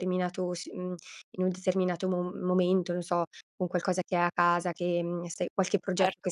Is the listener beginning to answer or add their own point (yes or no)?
yes